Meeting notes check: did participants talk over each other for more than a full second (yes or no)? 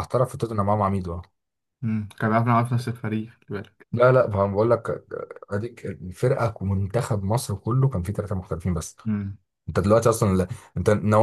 no